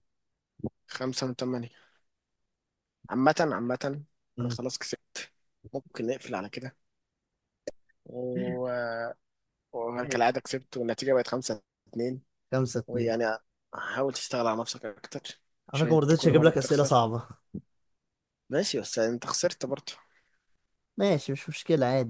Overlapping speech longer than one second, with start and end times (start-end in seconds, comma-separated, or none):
15.7-16.9